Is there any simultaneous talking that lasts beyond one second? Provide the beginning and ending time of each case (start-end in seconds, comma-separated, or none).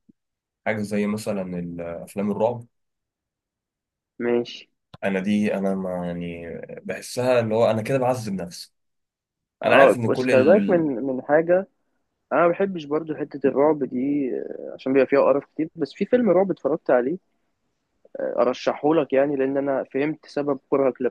9.7-10.9